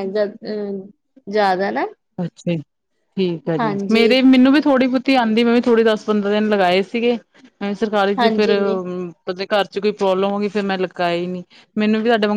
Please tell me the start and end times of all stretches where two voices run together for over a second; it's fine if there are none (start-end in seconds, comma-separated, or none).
none